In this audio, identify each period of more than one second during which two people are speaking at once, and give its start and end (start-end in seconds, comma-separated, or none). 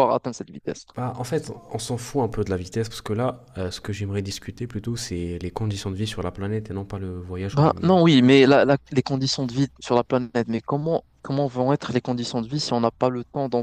none